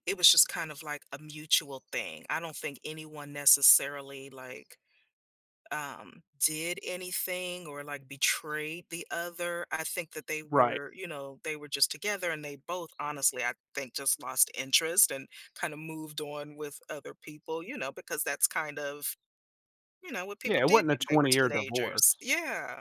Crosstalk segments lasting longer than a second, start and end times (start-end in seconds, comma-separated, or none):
20.4-22.0